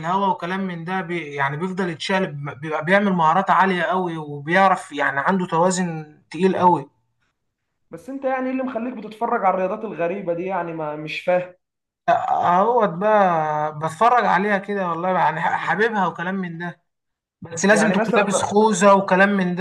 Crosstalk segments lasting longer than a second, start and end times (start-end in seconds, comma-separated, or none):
none